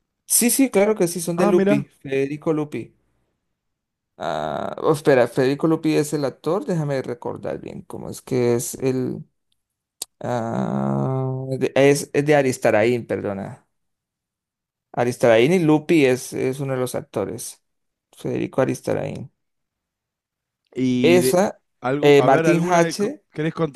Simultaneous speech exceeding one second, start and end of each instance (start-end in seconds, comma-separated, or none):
22.0-23.2